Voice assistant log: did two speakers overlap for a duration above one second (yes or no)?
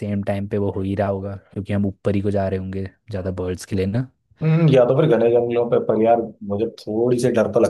no